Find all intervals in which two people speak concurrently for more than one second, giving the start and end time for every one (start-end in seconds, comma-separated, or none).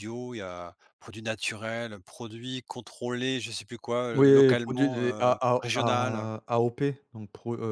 4.1-6.3